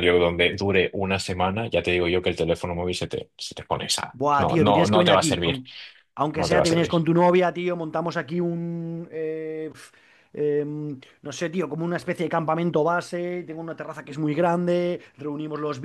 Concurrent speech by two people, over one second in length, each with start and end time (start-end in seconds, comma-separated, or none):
4.1-5.6